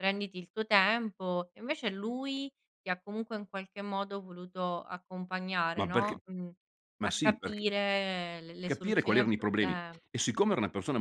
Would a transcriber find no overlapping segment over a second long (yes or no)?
no